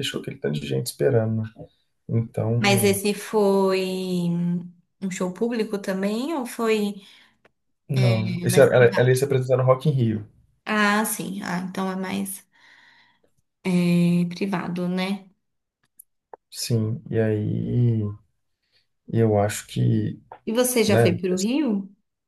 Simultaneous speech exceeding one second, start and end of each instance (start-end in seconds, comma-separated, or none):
8.0-9.2